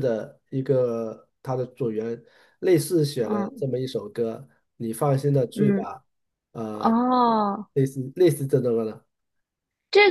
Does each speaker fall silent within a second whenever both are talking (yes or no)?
yes